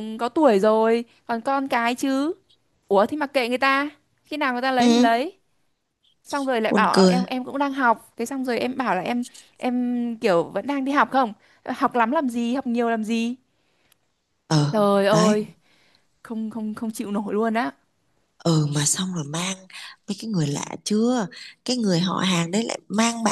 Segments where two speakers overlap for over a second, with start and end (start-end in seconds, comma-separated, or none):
none